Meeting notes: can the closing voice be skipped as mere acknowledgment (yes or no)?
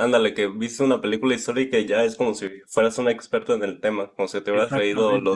yes